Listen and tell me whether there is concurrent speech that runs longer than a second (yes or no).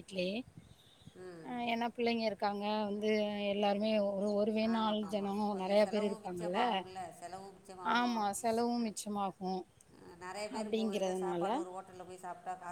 yes